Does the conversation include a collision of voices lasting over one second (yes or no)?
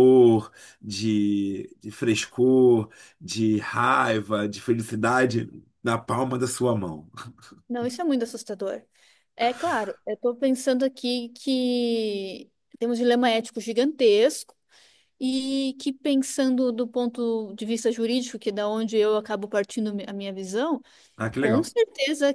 no